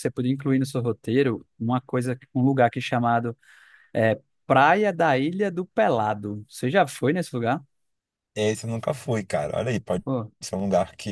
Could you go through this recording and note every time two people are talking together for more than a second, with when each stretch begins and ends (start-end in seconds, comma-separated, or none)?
none